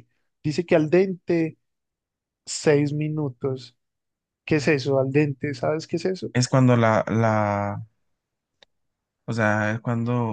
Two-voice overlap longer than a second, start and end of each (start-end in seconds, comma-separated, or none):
none